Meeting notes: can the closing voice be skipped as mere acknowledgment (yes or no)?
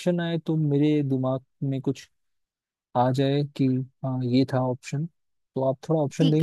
no